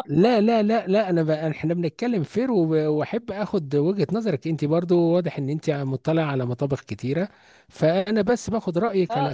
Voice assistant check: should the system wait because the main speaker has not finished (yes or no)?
no